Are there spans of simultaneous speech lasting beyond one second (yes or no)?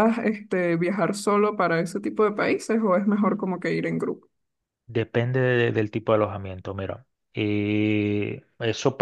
no